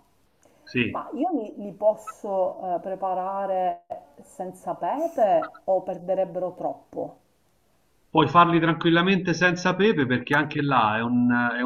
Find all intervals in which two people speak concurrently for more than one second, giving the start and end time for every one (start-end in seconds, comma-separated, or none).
none